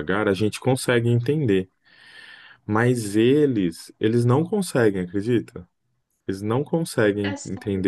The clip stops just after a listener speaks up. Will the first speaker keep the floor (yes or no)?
yes